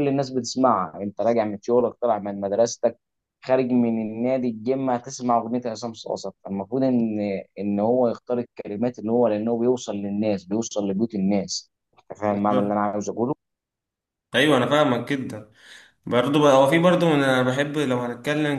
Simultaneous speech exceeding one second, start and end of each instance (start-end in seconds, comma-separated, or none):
none